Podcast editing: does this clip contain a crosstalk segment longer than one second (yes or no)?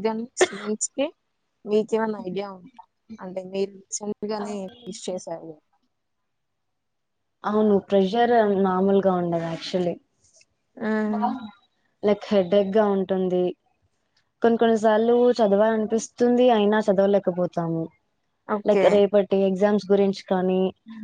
no